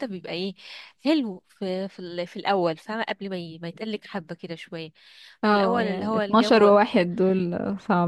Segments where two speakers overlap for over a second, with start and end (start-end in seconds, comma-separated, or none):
5.5-6.7